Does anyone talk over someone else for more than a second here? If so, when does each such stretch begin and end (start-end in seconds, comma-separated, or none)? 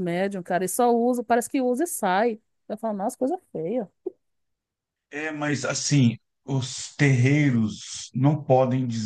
none